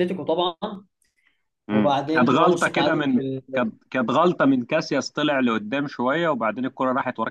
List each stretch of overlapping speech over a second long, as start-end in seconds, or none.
1.7-3.4